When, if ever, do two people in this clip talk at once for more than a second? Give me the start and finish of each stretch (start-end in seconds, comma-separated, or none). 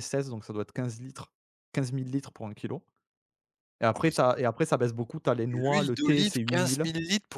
5.5-6.8